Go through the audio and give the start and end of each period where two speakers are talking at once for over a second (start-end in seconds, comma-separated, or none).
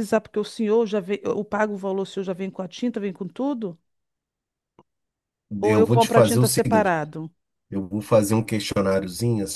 5.6-6.9